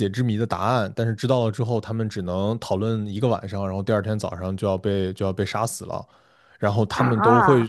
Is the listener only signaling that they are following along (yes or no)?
yes